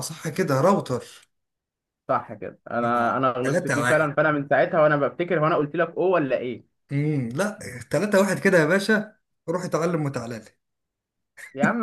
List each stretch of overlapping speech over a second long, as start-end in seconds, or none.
2.8-4.1